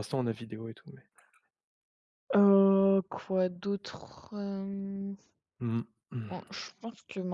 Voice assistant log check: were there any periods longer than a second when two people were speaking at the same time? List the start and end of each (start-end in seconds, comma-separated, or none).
none